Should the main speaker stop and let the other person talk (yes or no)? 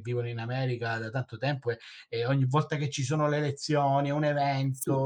yes